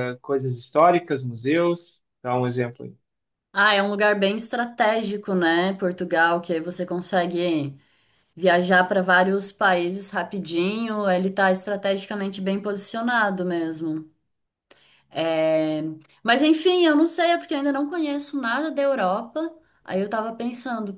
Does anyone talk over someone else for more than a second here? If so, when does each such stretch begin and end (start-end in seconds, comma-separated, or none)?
none